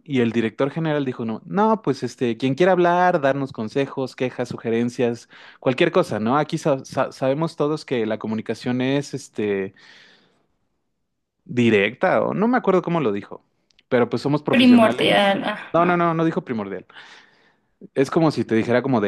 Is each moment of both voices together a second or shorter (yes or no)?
no